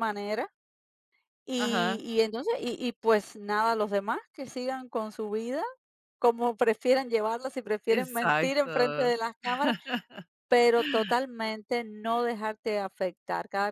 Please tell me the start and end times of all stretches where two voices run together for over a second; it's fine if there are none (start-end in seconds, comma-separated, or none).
7.9-9.1